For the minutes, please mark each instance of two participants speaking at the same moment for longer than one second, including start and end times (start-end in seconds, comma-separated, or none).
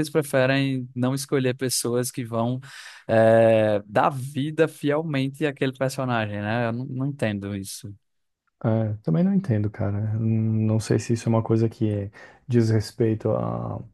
none